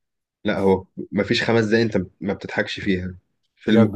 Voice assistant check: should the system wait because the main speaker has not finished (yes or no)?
yes